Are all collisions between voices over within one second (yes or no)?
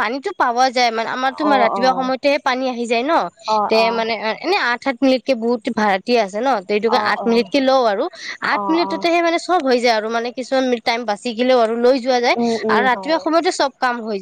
yes